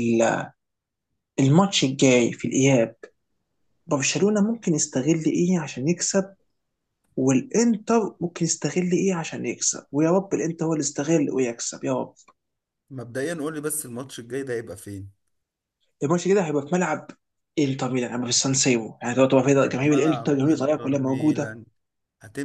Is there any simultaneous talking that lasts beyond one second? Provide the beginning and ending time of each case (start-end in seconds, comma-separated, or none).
19.4-21.6